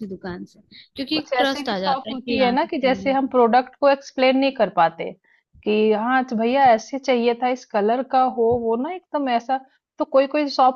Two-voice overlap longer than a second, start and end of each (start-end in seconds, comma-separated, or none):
1.1-3.3